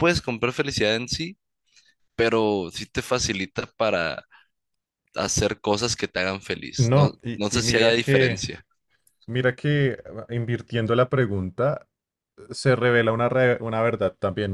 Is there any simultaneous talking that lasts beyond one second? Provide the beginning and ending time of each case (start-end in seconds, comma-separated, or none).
6.8-8.4